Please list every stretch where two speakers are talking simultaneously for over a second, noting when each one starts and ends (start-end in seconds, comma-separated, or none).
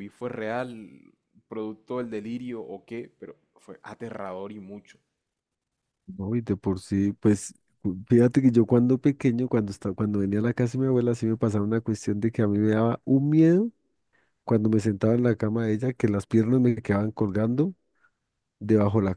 none